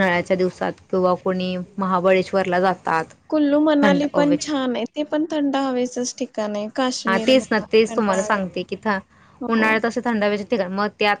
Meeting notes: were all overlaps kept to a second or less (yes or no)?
no